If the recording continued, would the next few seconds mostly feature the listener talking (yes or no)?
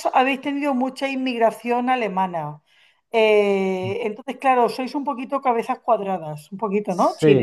yes